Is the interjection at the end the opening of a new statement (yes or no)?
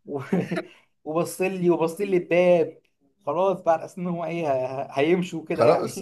yes